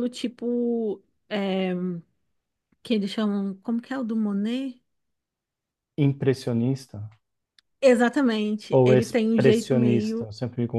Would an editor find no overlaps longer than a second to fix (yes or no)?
no